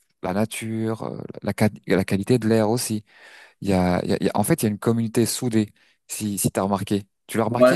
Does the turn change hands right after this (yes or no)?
yes